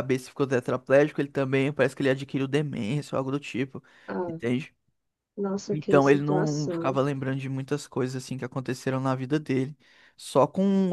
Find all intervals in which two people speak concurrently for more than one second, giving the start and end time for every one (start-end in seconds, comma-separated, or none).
5.7-7.0